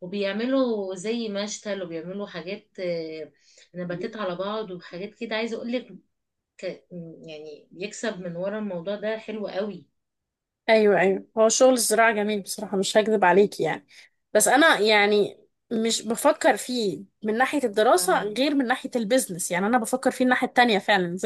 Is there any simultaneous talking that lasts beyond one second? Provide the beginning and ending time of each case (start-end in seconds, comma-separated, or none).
none